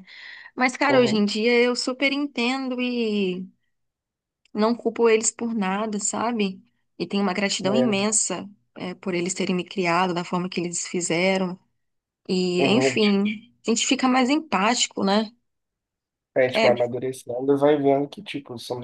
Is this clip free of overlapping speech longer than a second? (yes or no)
yes